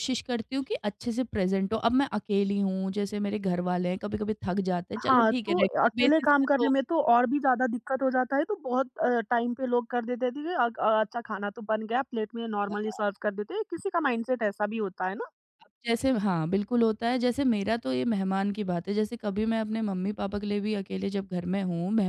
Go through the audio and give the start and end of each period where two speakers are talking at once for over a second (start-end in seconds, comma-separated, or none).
5.0-6.7